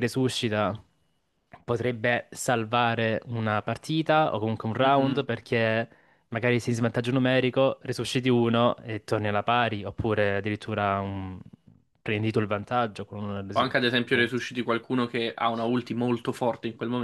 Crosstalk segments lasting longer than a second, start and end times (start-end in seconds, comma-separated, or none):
none